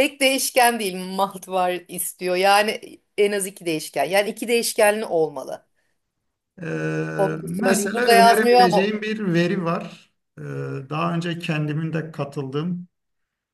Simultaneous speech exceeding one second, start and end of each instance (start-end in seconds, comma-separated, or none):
7.4-8.9